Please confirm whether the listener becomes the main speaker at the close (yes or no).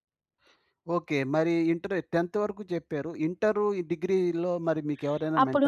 yes